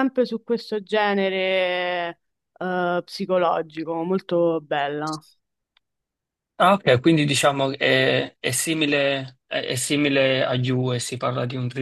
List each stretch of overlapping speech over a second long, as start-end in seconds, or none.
none